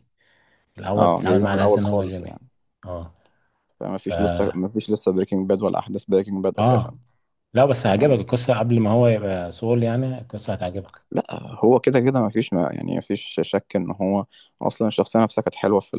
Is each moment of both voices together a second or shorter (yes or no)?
no